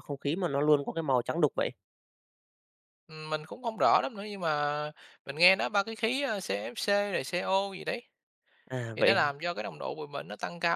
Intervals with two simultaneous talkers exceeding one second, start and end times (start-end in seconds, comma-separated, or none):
none